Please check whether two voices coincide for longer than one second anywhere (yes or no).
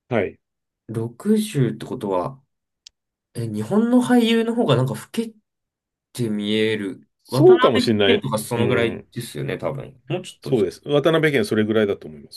yes